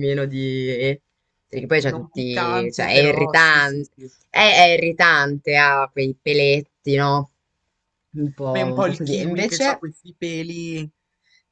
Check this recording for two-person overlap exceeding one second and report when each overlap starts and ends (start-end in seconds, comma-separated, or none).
1.9-3.9, 8.4-9.8